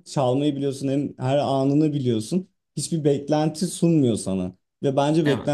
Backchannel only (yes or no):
yes